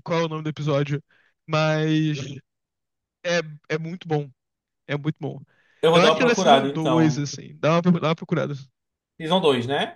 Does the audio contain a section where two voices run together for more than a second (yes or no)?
yes